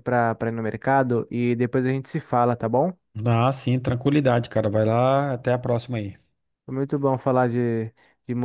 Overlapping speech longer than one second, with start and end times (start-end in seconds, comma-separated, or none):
none